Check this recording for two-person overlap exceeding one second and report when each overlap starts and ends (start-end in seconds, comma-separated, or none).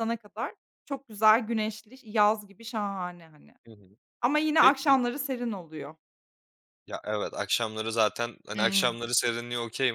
none